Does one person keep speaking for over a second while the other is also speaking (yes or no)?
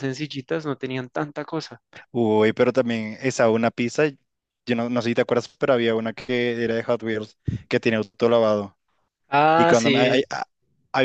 no